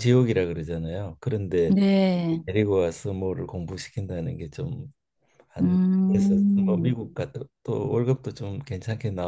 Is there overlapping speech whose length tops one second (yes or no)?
yes